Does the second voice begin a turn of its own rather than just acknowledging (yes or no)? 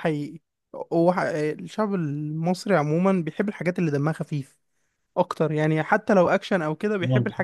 no